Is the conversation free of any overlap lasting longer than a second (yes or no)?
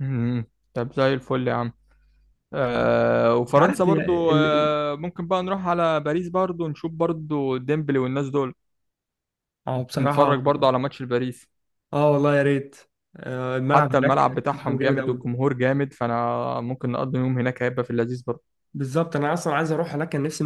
no